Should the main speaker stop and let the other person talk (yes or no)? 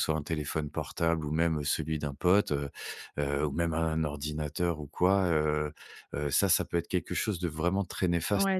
yes